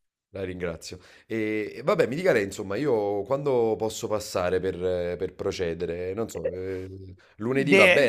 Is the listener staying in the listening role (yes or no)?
no